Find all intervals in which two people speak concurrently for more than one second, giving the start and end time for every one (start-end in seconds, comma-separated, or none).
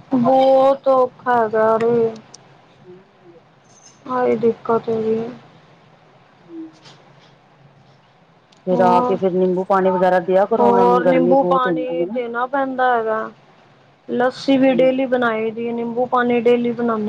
10.6-12.2